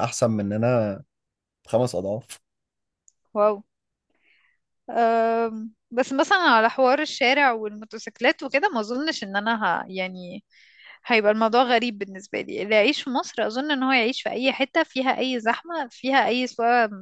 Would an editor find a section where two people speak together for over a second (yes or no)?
no